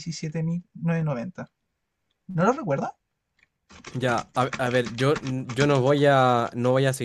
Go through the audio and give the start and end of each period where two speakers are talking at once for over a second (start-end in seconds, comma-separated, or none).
none